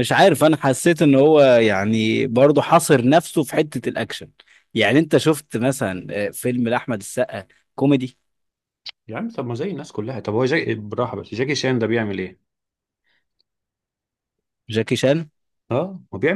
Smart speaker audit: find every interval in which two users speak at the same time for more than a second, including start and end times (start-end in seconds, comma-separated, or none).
none